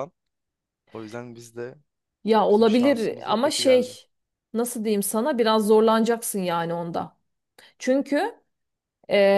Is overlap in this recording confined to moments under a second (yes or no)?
no